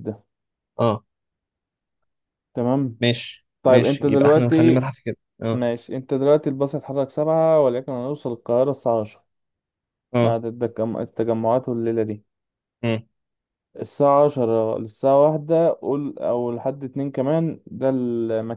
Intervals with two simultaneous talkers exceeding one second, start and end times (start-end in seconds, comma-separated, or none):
3.6-4.8